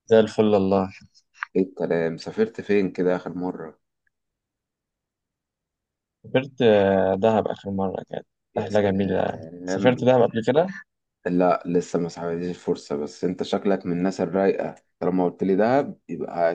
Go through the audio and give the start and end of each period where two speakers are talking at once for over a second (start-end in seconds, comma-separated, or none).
8.5-10.2